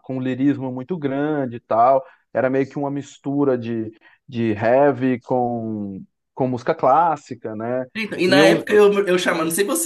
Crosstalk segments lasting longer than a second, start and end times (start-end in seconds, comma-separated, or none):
none